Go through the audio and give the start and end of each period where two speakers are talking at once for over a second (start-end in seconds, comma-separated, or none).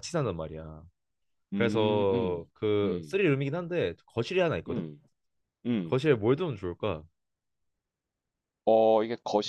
1.5-3.2